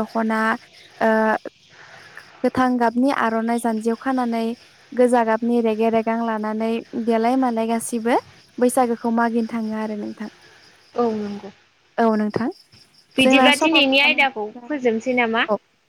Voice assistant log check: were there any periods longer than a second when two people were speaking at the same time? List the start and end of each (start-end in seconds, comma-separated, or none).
13.2-14.9